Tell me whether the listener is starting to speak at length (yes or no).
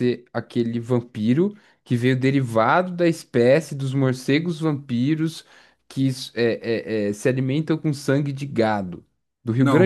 yes